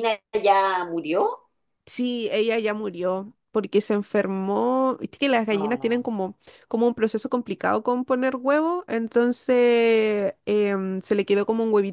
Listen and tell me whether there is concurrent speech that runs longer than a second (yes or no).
no